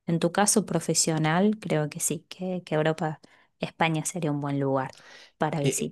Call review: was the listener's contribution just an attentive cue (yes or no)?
no